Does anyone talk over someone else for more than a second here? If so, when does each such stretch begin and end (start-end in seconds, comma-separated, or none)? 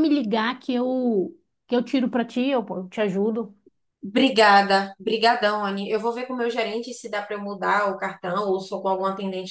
none